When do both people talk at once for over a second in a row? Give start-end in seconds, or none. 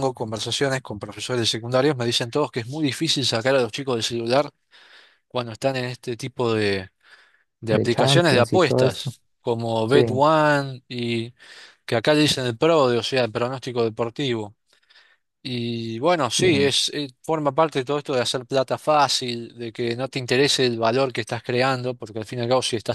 7.7-9.1